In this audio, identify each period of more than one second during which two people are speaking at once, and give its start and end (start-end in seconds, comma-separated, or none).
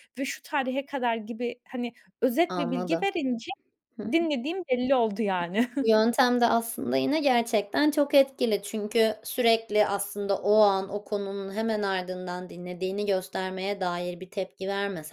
none